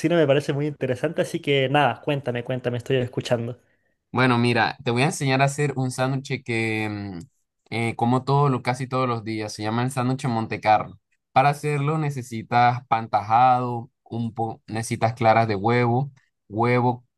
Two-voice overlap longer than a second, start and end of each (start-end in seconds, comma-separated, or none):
none